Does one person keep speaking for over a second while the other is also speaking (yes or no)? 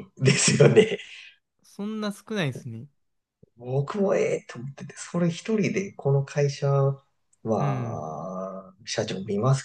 no